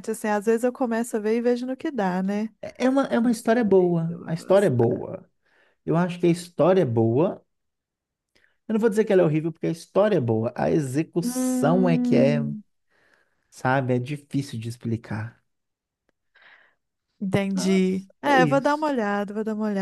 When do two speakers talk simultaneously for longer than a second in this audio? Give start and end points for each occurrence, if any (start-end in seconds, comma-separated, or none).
3.2-5.0, 11.2-12.4, 17.5-18.9